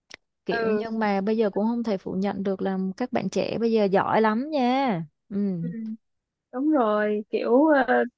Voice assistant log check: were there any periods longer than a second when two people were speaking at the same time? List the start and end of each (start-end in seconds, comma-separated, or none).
none